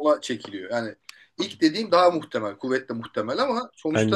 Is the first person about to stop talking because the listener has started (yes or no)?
no